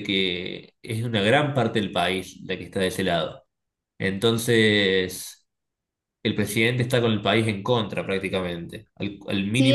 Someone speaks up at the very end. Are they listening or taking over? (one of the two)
taking over